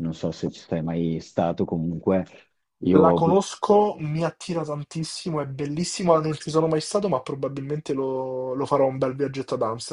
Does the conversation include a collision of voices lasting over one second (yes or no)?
no